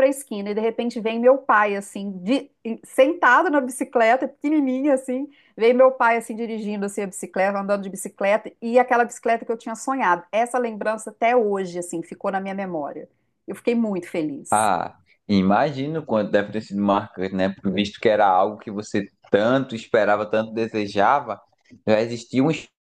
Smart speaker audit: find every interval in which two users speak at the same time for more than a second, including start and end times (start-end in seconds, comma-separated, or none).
none